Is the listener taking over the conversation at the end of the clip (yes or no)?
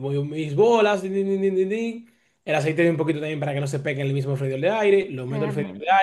no